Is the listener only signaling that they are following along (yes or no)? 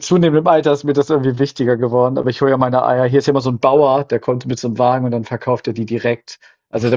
yes